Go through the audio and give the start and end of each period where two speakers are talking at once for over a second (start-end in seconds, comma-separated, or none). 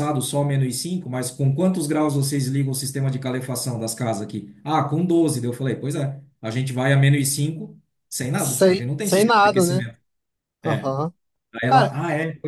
8.3-9.9